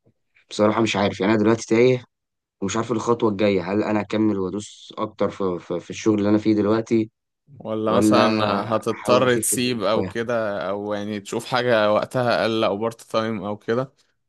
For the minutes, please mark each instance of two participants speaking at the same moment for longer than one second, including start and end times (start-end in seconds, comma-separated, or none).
8.9-10.1